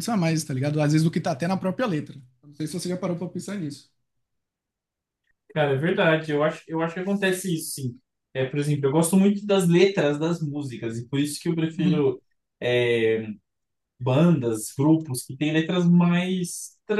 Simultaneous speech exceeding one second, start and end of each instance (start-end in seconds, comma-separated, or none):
none